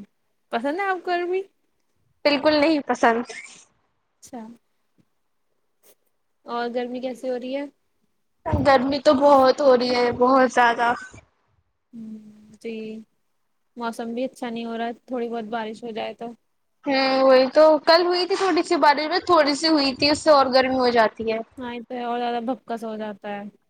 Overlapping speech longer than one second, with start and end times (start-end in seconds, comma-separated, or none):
none